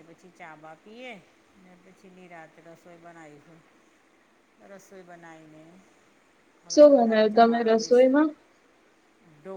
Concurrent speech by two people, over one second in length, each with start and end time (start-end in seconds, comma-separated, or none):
6.7-8.2